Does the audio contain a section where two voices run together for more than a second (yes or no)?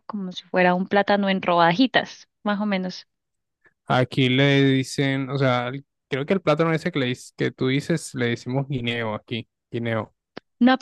no